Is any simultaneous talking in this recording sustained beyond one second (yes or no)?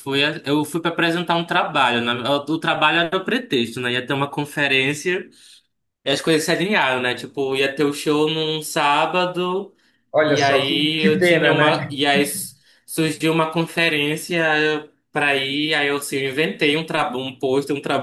yes